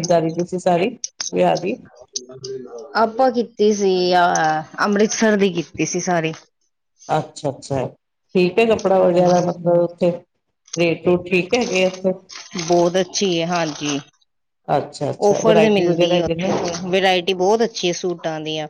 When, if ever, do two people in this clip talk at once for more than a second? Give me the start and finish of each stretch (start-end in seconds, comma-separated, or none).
15.3-16.5